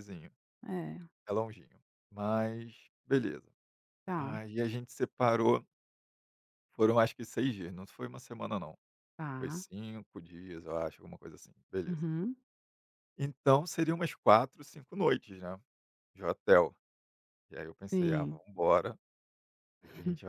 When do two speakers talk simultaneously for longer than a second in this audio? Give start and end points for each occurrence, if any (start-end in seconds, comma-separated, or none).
none